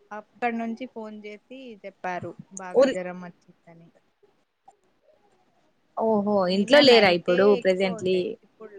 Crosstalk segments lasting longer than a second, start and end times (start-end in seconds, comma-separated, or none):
6.5-8.2